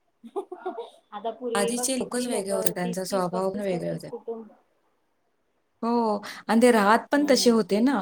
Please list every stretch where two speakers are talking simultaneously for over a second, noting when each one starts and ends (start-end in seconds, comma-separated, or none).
1.6-4.1